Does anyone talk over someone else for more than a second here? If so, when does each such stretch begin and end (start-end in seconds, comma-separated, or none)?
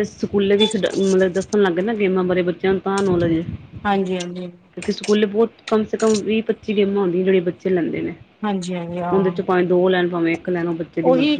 none